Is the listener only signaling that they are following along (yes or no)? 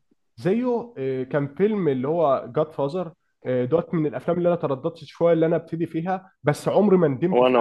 yes